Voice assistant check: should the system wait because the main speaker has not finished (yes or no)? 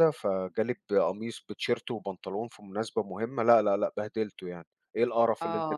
no